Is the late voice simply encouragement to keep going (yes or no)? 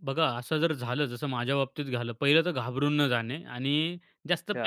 yes